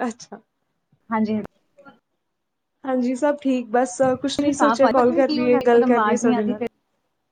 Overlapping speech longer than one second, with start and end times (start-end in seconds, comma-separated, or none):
4.2-6.6